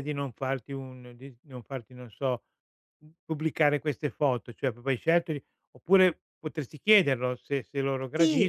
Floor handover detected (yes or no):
yes